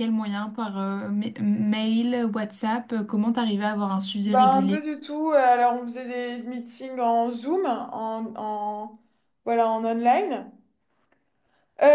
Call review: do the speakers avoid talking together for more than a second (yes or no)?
yes